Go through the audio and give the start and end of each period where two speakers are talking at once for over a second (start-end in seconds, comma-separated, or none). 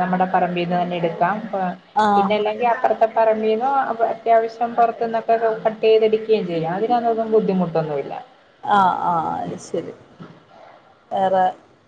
none